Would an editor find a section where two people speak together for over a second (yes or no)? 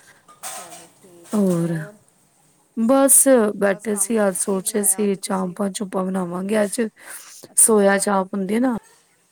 yes